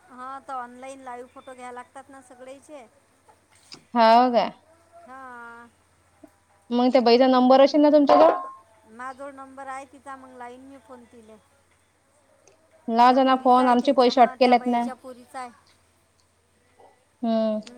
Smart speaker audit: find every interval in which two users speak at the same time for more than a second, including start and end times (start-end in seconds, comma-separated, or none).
13.1-14.8